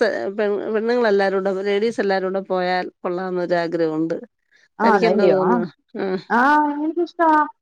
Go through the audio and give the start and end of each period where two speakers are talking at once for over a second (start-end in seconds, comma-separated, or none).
none